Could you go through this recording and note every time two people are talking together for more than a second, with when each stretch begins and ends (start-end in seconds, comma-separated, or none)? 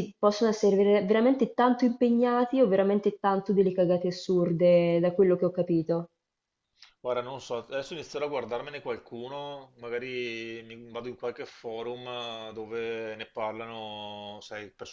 none